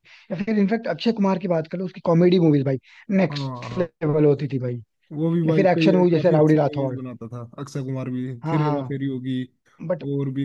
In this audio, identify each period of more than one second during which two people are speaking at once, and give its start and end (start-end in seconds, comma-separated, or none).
5.5-7.0